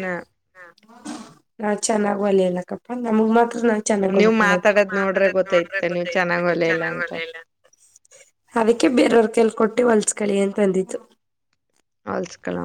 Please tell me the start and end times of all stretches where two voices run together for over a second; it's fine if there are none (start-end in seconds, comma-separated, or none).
4.2-7.1